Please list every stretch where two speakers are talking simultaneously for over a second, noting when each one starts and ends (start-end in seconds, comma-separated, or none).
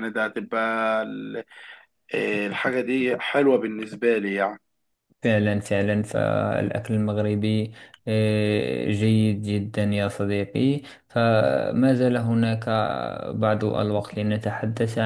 none